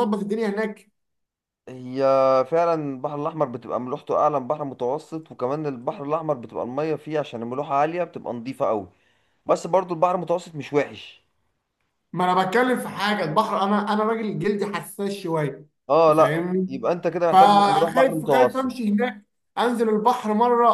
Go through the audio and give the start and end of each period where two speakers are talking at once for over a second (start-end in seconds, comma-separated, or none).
17.3-18.8